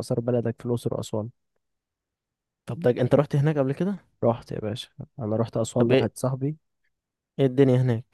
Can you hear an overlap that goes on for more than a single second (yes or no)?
no